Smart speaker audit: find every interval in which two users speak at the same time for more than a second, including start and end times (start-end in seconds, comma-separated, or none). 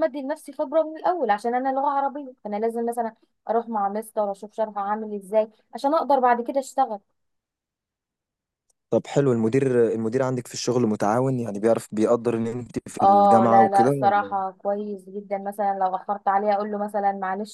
13.0-14.4